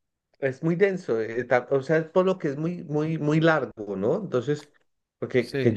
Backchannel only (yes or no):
yes